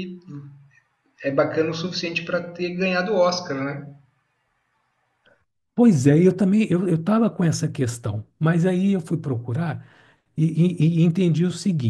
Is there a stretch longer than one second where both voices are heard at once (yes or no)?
no